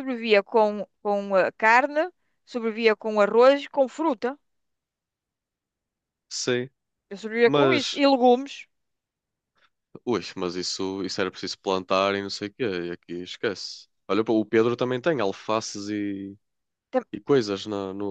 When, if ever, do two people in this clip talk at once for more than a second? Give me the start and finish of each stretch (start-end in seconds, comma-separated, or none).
none